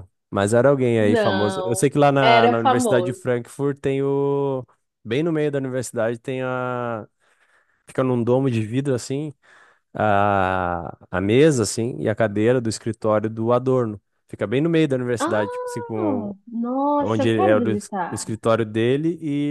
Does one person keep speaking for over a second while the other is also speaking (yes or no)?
yes